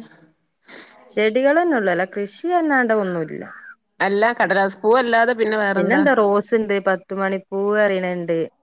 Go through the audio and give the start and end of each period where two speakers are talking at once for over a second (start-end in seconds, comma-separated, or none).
none